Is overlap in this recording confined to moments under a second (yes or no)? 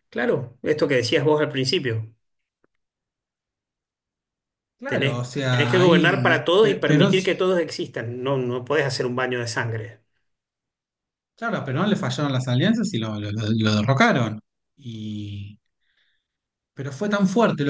no